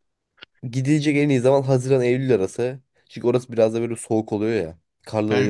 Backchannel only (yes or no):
yes